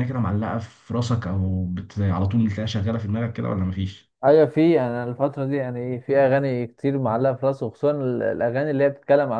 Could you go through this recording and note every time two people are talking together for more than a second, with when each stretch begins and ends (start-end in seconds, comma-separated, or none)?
none